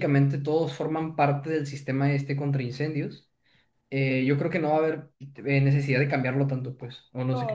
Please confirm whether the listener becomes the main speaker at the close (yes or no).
yes